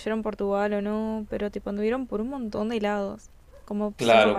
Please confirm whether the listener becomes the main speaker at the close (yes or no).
yes